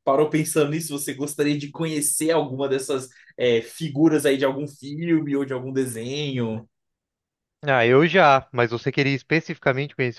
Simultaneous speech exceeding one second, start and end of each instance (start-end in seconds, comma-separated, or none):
none